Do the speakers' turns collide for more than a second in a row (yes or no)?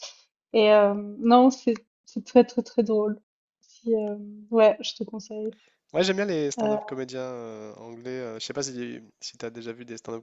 no